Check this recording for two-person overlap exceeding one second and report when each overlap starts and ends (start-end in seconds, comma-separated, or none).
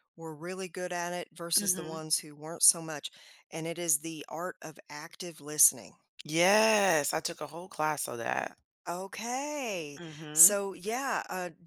none